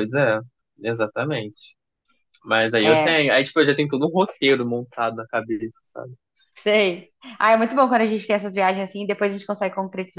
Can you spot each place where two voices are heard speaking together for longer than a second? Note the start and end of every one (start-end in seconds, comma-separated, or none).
none